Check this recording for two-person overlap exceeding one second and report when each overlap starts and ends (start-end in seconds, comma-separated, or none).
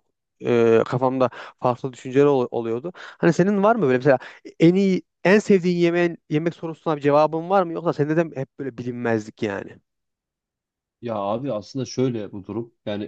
none